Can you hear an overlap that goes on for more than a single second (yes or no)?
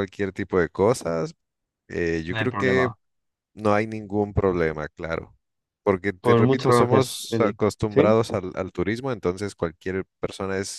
yes